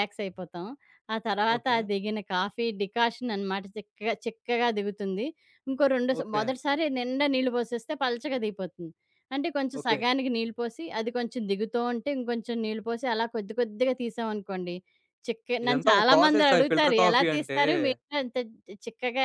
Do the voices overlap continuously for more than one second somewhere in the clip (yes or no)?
yes